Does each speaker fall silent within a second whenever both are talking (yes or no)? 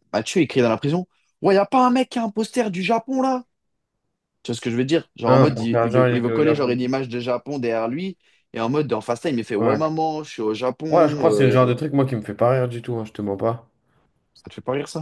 no